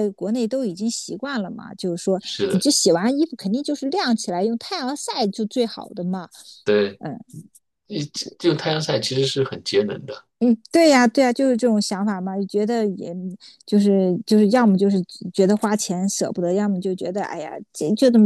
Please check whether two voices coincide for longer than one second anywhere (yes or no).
no